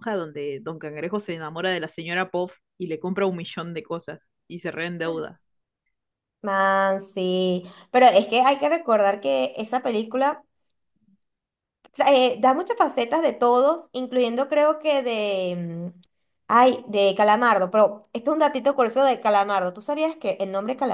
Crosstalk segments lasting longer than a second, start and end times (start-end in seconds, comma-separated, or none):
none